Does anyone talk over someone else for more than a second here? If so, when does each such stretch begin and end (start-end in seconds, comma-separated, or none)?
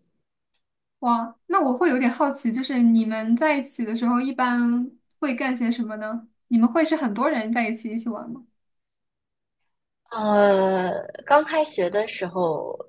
none